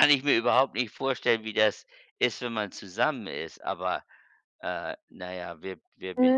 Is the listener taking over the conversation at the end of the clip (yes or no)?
yes